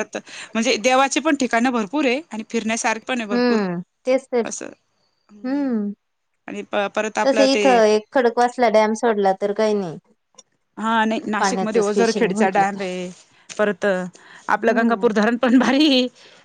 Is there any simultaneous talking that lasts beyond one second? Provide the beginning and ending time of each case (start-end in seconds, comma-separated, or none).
11.4-12.8